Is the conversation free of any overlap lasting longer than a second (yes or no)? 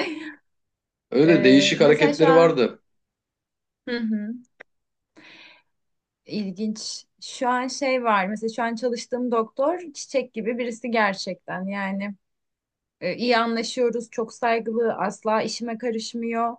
no